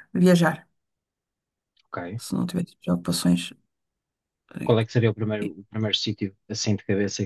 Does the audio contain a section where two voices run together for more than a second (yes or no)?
no